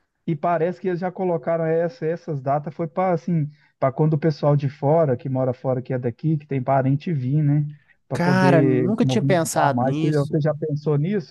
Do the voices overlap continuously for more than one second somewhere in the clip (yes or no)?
yes